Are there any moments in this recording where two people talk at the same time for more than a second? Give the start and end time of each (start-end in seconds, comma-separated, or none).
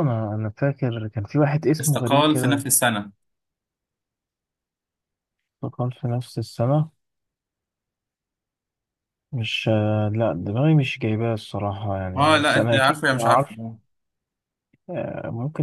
12.2-13.6